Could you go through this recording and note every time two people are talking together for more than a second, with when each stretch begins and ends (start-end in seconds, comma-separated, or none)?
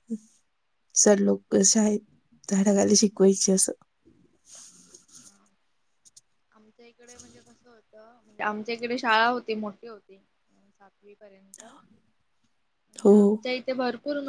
none